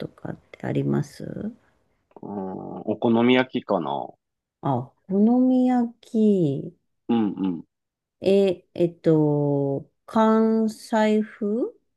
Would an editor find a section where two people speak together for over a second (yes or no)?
no